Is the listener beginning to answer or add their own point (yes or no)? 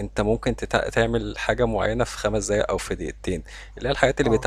no